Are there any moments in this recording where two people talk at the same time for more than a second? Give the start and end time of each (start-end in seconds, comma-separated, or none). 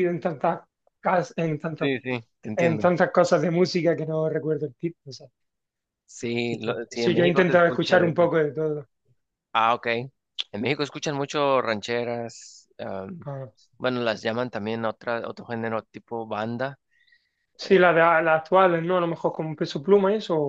6.3-8.3